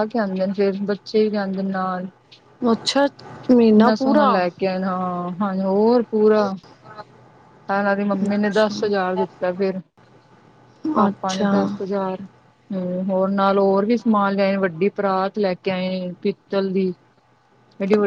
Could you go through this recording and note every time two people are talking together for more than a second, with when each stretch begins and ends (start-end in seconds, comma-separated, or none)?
none